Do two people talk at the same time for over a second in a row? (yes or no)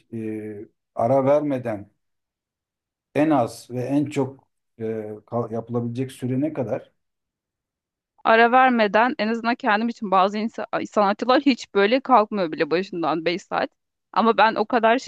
no